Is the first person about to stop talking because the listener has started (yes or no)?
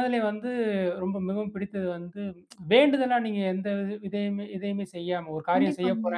no